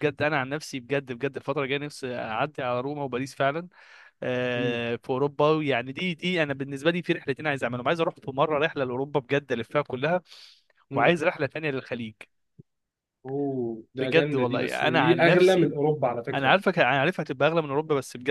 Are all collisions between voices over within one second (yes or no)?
no